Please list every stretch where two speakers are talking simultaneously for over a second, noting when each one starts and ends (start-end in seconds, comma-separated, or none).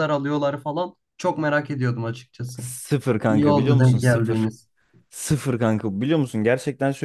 3.3-4.5